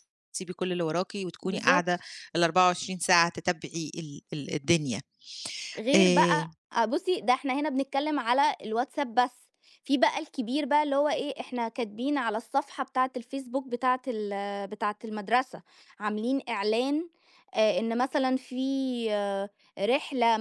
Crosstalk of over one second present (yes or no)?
no